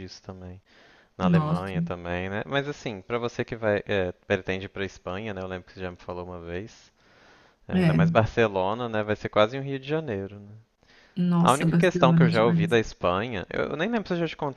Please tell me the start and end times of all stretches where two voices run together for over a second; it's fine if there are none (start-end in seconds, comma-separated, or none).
11.4-12.8